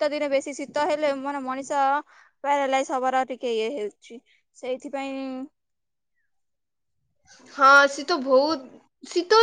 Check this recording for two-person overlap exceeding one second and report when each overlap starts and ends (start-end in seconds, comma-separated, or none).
none